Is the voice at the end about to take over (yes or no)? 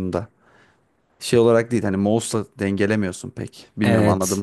yes